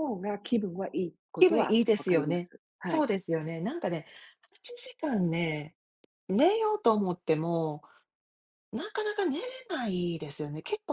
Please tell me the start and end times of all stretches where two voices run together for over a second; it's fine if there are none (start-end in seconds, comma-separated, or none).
1.3-3.1